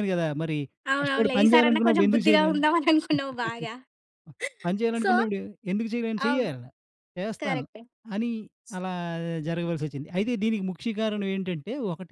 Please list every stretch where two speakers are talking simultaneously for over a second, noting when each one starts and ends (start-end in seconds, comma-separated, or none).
1.0-2.6